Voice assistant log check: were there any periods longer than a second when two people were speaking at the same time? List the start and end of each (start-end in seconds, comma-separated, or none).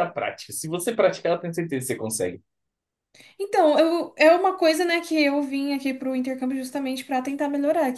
none